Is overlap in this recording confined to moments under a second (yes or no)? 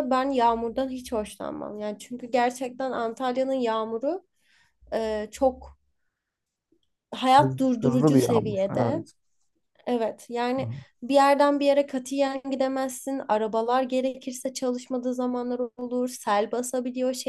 no